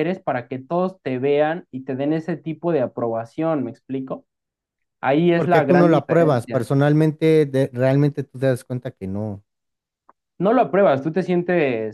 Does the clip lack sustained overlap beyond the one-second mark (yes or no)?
no